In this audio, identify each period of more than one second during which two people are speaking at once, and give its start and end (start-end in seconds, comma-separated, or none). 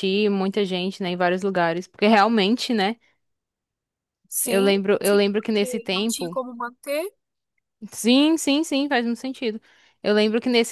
4.5-6.4